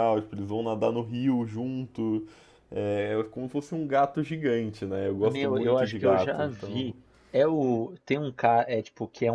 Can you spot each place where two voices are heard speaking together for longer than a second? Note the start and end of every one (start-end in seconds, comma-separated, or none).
5.2-6.9